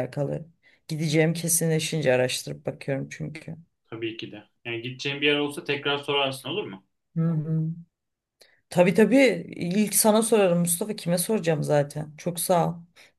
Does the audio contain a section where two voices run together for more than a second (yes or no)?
no